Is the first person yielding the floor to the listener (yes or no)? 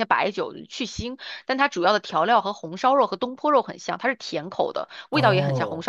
no